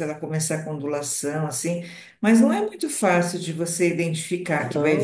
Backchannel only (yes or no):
no